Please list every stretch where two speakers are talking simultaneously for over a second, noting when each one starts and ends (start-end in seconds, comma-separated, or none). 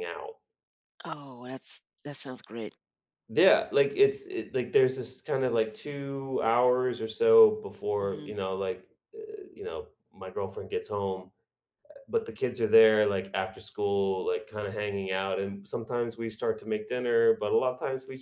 none